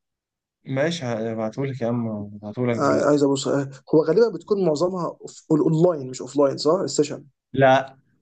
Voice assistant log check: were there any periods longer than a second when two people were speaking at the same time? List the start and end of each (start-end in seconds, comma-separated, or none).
none